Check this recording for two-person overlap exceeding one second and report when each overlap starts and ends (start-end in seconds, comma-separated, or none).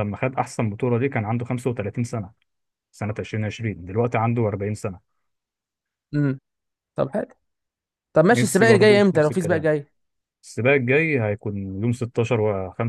8.3-9.7